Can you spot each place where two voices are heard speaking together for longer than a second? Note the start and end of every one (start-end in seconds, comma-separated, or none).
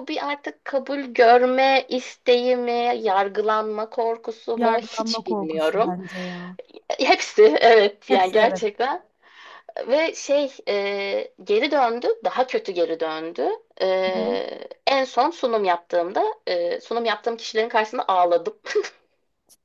4.6-6.0